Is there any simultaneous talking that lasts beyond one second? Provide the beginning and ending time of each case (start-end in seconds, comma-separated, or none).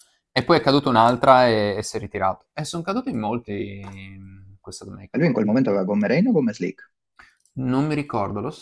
none